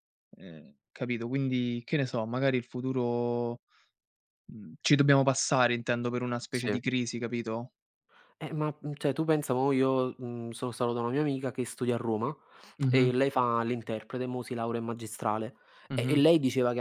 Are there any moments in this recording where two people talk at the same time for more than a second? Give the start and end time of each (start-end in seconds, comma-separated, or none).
none